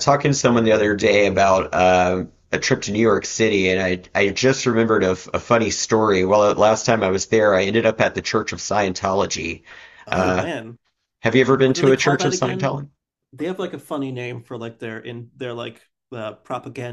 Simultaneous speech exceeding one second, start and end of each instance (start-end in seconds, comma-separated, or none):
11.4-12.7